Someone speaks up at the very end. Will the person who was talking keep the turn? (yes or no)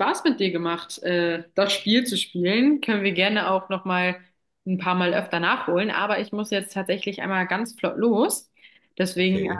yes